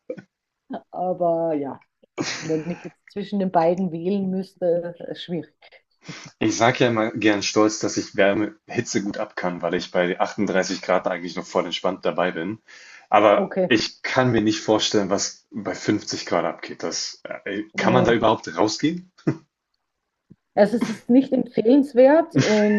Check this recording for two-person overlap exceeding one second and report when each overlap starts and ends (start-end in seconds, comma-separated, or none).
none